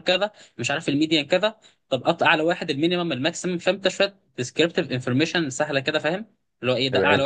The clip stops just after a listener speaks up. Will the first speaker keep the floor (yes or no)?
yes